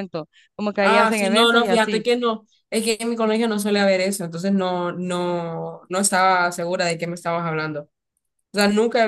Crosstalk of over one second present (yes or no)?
yes